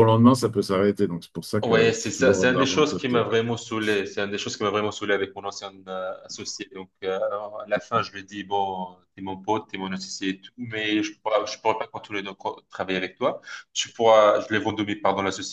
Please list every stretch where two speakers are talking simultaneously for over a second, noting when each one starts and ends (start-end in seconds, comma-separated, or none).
1.6-3.4